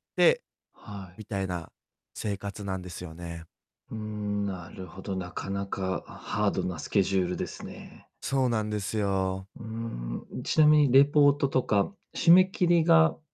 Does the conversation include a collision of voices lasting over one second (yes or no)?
no